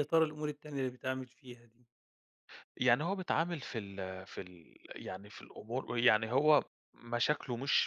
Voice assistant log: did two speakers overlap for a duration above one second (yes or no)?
no